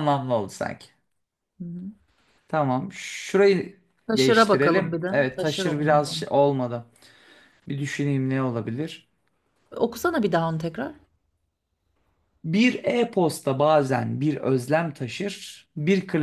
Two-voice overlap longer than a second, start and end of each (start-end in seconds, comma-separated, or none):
4.2-6.2